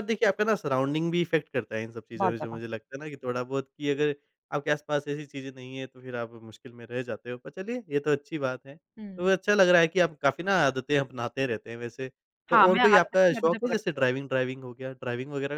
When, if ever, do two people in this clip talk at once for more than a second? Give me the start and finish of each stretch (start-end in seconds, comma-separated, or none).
12.5-14.2